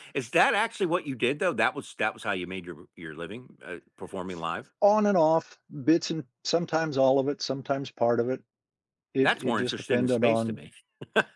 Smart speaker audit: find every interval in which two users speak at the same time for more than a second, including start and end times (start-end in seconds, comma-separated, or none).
9.2-10.6